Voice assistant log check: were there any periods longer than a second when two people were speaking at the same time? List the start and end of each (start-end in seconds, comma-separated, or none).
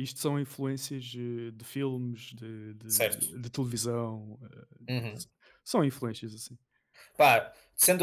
none